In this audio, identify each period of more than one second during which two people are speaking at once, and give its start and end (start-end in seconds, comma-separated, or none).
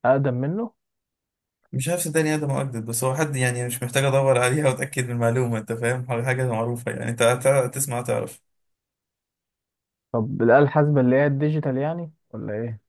none